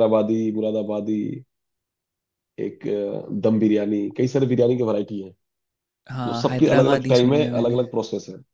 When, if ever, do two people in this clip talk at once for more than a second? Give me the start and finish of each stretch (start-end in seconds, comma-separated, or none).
6.1-7.8